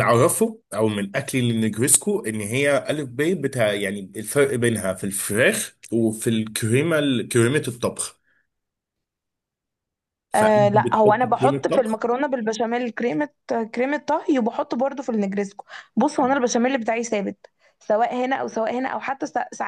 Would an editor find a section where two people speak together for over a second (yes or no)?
yes